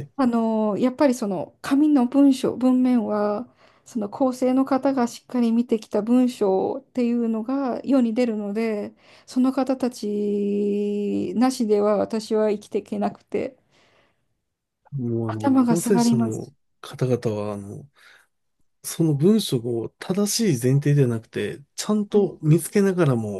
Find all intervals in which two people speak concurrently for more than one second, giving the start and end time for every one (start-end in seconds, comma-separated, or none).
15.3-16.5